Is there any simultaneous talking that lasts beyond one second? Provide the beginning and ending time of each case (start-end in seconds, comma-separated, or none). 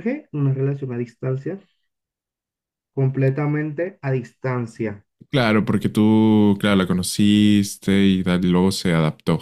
none